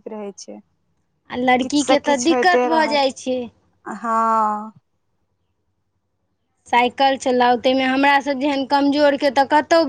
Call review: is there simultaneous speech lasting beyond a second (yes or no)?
no